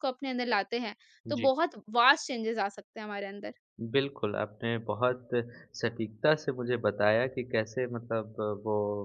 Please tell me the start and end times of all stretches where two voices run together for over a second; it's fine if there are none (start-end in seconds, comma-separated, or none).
none